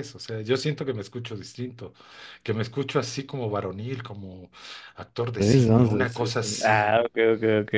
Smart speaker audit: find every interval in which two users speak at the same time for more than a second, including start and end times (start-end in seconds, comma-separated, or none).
5.4-7.0